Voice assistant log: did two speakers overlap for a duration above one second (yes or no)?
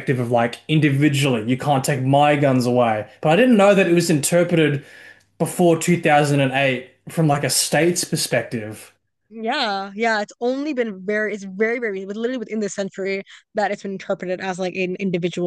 no